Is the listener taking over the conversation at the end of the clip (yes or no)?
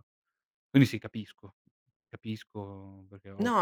yes